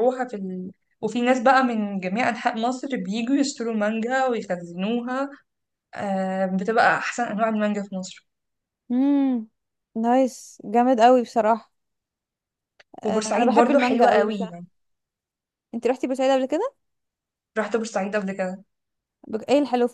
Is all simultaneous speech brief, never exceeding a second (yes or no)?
no